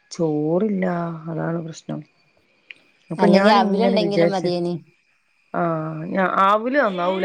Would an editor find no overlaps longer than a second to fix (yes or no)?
no